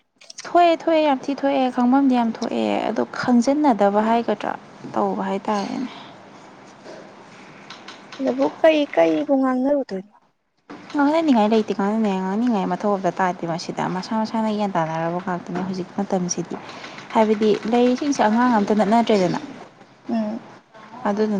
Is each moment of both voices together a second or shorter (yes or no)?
yes